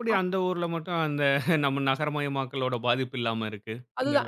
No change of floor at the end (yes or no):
no